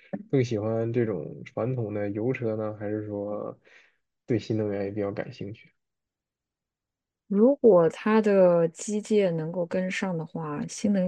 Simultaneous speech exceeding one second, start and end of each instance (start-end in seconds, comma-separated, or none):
none